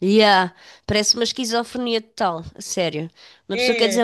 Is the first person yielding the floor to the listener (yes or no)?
no